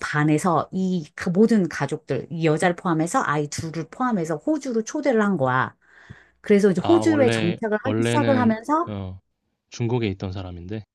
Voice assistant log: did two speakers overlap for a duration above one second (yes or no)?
yes